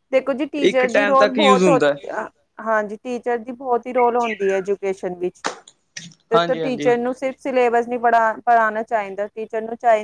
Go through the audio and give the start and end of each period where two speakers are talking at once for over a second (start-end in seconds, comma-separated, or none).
0.7-2.0